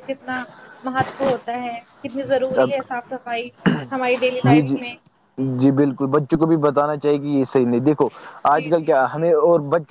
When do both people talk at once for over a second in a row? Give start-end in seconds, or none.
none